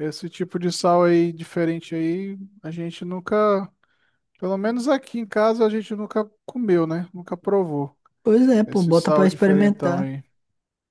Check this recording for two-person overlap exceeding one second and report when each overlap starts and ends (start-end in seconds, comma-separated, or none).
8.7-10.0